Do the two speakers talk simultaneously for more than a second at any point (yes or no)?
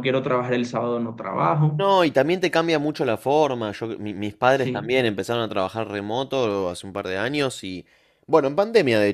no